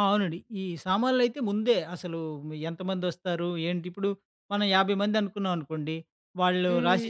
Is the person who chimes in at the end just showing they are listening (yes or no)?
yes